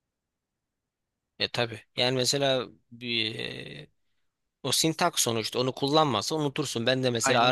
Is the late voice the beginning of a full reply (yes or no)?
no